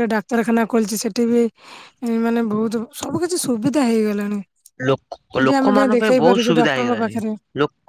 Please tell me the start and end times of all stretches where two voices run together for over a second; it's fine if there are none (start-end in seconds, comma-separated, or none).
5.3-7.1